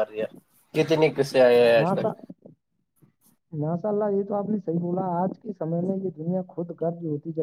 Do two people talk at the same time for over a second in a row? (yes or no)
no